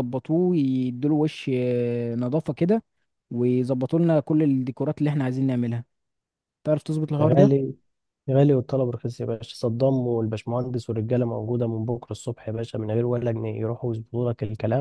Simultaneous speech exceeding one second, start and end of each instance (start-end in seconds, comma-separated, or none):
none